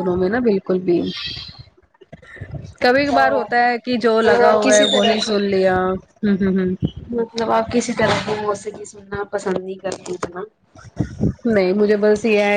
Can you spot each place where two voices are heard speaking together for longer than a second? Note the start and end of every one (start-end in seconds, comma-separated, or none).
3.1-5.3